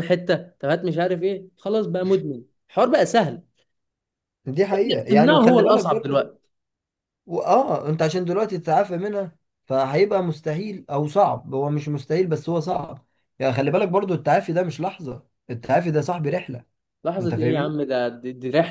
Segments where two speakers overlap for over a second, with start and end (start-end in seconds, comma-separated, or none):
4.7-6.2